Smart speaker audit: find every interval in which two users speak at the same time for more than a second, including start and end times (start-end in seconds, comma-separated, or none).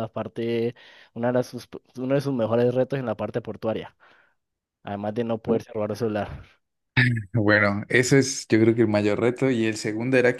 none